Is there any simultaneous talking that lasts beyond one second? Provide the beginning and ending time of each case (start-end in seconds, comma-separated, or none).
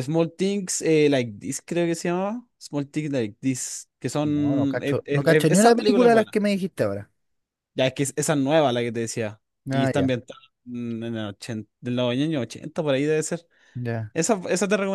4.2-6.3